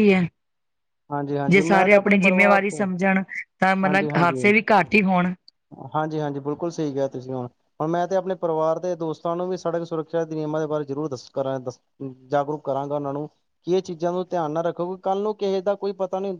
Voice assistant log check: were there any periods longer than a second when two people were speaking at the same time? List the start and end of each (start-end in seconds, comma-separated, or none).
1.5-2.9